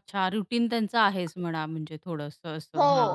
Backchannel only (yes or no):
no